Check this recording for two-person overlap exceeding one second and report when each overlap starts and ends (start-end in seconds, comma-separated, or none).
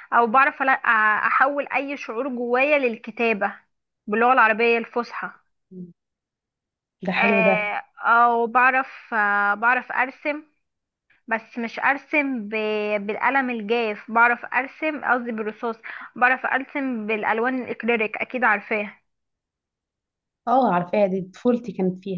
none